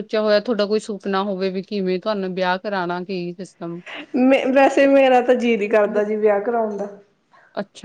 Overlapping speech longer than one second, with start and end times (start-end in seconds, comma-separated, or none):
none